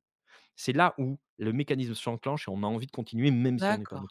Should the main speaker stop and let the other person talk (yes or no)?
yes